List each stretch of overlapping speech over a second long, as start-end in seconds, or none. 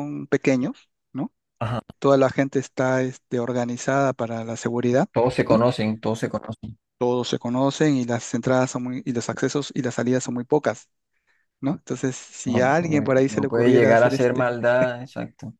12.4-14.5